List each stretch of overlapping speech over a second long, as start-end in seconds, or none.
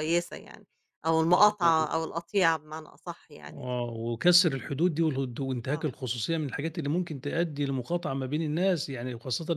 none